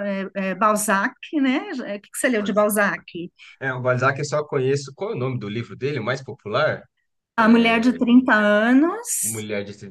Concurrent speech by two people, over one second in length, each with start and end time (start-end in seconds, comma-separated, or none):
none